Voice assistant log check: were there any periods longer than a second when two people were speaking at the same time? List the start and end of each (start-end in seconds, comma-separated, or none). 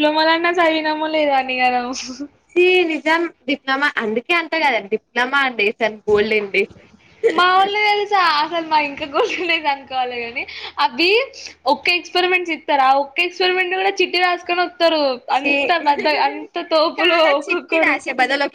none